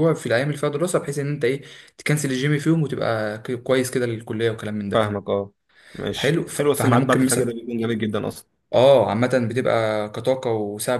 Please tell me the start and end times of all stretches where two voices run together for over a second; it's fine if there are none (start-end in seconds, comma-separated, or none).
6.2-7.5